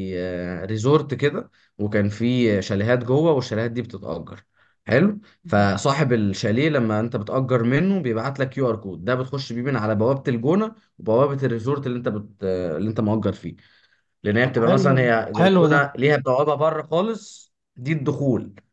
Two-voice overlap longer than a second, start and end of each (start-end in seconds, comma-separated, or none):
14.4-15.9